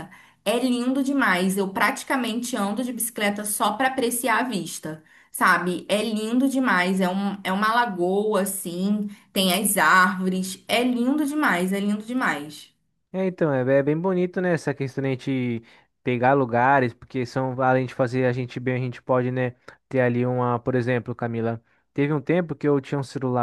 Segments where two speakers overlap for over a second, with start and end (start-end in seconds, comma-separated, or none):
none